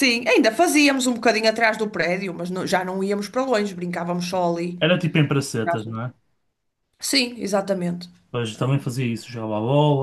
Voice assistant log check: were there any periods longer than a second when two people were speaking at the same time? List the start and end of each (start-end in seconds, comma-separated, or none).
none